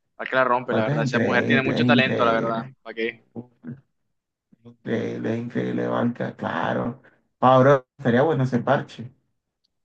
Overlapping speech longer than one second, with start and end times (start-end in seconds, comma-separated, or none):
0.7-2.7